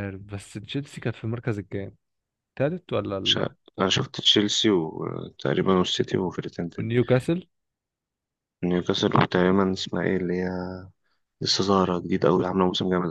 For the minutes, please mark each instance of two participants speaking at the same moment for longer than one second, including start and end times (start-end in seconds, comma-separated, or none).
none